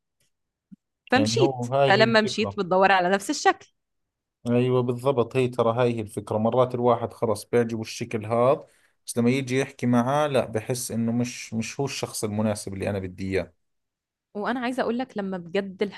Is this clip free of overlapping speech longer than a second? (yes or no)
no